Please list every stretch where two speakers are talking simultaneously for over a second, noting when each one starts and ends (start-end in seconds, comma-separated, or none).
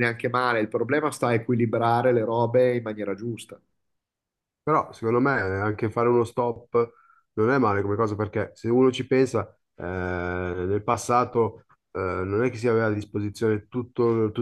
none